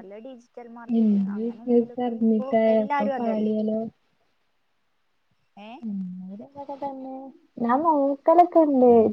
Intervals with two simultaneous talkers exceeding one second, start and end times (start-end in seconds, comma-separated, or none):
1.0-3.5